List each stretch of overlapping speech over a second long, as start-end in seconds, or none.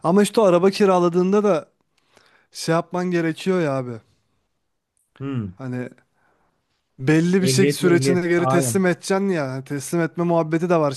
7.4-8.8